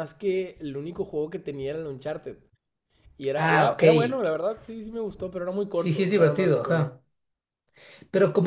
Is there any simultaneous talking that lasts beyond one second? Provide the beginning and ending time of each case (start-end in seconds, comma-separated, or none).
5.7-7.0